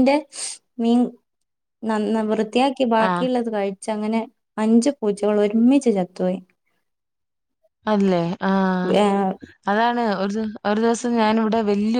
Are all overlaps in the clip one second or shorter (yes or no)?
yes